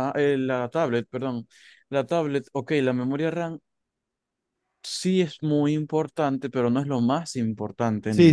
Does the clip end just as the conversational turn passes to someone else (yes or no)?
yes